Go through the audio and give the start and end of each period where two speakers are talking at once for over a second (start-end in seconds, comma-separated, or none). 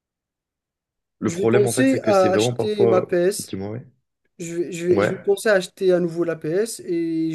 1.3-3.5